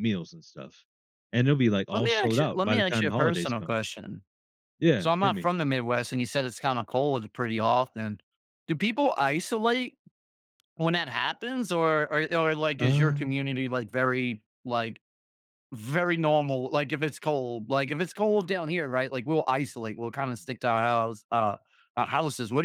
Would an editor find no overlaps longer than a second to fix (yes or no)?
no